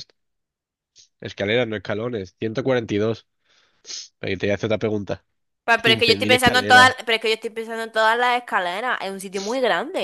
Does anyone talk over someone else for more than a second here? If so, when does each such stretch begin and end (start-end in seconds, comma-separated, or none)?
5.8-7.0